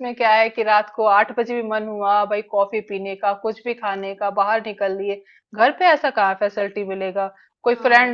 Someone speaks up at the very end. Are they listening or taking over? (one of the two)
listening